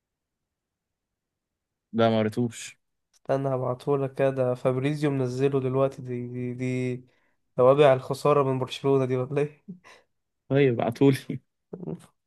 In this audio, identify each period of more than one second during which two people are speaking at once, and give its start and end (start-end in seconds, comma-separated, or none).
none